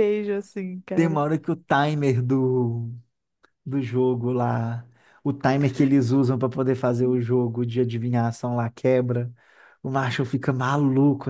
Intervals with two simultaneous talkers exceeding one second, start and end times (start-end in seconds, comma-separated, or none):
none